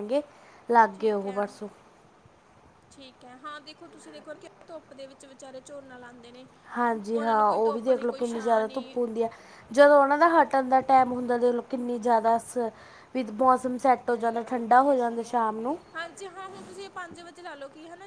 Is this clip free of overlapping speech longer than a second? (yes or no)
no